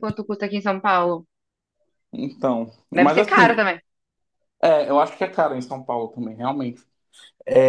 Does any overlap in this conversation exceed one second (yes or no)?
no